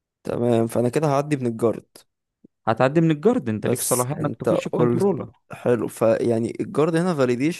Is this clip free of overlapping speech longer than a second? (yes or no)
no